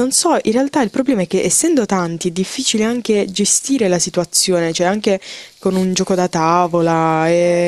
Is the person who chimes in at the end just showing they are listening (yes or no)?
no